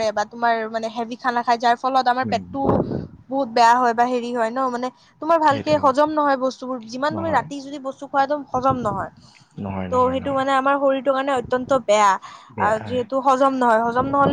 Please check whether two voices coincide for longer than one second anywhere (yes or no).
no